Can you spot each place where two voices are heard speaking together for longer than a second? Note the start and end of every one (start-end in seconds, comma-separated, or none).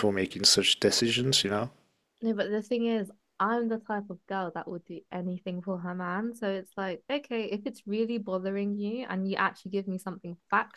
none